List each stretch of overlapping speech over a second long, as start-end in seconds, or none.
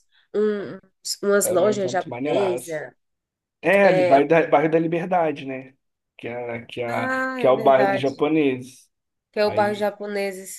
1.4-2.8, 6.9-8.2